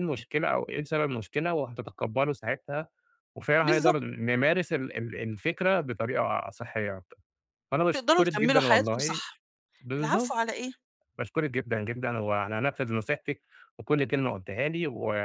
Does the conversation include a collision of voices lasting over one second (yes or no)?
yes